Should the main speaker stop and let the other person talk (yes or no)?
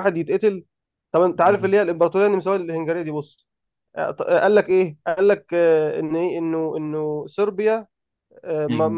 no